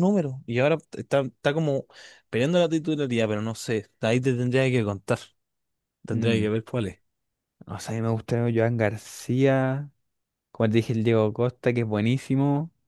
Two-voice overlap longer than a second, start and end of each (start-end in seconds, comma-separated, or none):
none